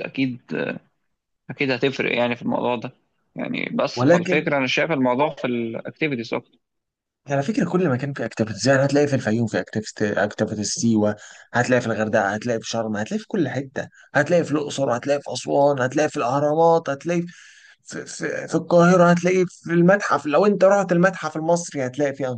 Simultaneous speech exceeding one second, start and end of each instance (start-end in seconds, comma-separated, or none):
none